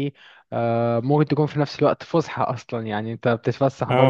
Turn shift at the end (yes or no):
no